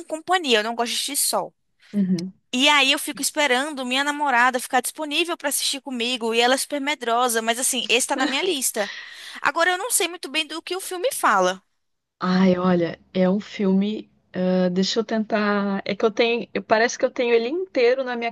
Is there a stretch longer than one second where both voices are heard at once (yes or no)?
no